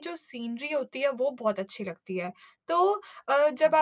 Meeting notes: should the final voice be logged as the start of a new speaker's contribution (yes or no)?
no